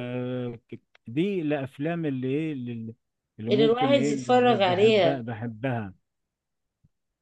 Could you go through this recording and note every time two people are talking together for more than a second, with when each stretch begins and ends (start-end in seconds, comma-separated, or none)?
3.5-5.2